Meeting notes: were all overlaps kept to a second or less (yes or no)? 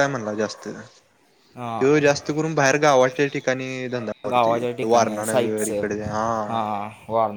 no